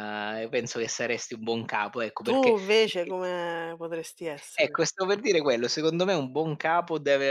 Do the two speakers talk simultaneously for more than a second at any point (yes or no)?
no